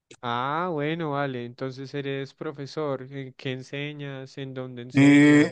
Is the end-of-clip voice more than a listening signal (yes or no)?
yes